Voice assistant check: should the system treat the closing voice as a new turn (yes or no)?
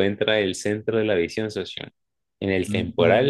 no